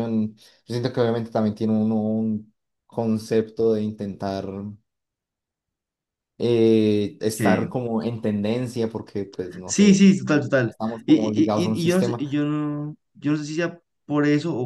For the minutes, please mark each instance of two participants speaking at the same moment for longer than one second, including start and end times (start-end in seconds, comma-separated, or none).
10.7-12.2